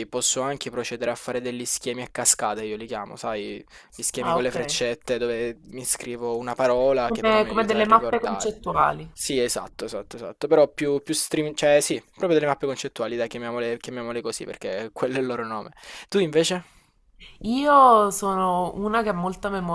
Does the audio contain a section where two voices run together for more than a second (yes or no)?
yes